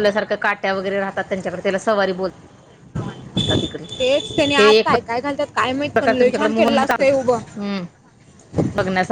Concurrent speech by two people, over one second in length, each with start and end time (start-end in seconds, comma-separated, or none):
6.0-7.4